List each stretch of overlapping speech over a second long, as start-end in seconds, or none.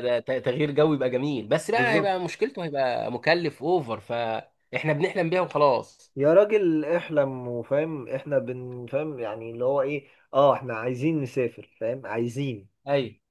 none